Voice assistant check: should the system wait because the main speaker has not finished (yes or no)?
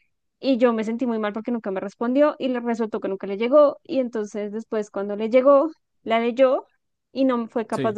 yes